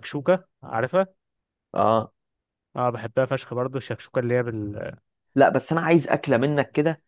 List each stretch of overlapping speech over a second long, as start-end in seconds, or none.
none